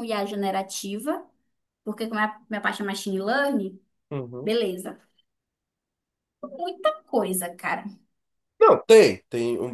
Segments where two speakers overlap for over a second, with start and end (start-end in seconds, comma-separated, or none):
none